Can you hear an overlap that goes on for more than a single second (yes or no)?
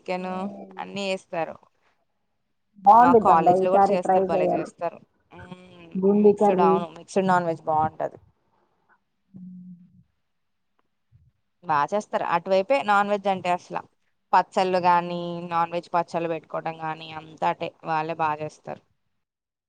yes